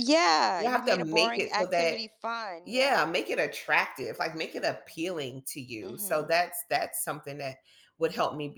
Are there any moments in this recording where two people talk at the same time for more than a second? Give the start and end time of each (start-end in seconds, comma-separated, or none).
0.6-2.0